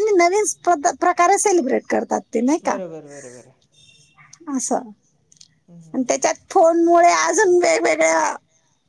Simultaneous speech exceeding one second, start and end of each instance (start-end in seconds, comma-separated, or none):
none